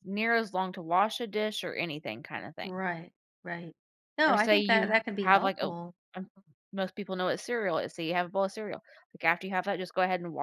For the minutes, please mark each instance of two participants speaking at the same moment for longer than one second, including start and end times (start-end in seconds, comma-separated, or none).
4.3-5.7